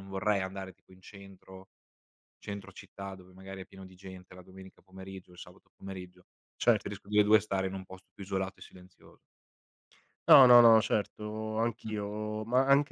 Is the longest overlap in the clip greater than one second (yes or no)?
no